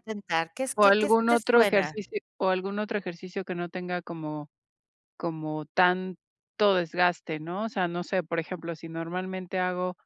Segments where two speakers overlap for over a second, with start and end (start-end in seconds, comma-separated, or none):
0.7-1.9